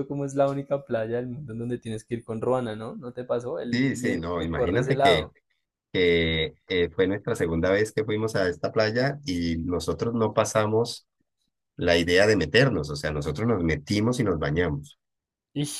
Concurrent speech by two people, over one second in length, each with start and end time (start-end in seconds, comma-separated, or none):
3.7-5.3